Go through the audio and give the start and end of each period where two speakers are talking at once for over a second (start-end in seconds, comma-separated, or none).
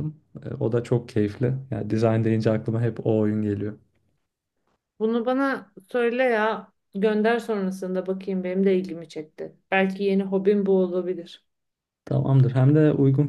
none